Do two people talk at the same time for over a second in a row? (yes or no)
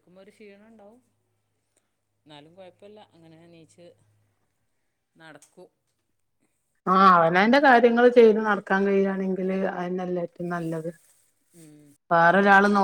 no